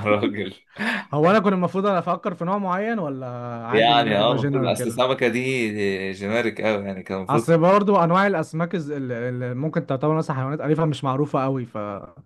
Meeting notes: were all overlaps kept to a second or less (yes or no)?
no